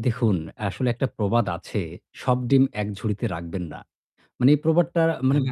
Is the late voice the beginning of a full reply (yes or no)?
no